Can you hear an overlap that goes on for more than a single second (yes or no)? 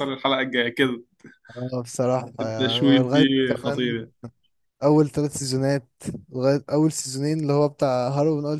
yes